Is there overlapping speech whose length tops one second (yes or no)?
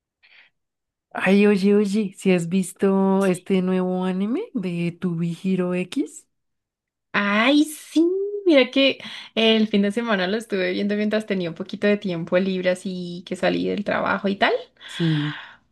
no